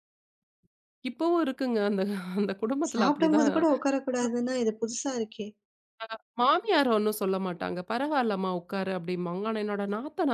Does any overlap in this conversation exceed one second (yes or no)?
no